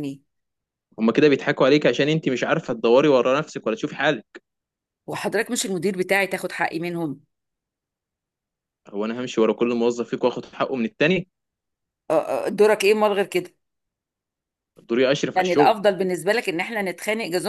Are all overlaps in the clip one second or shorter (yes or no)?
yes